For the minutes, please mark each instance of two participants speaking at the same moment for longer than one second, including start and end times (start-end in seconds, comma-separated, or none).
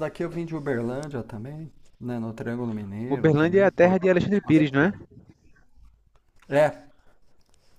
3.1-4.9